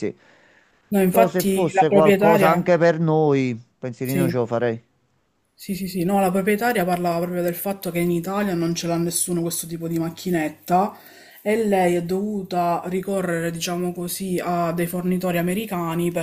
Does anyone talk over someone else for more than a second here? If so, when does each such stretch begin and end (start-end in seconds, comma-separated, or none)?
1.1-2.7